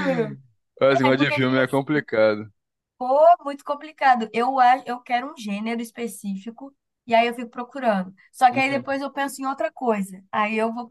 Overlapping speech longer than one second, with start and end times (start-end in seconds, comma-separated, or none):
none